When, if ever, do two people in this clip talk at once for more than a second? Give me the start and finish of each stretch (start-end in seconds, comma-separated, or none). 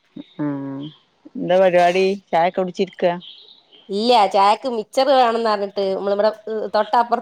none